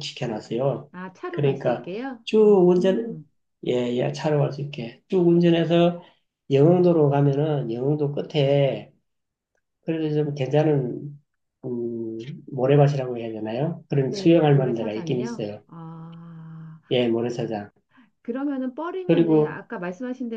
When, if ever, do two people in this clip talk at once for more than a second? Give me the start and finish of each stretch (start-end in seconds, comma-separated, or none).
14.1-15.6